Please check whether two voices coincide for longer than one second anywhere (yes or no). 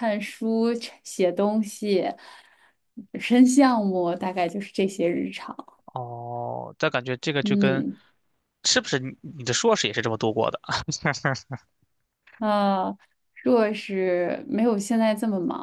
no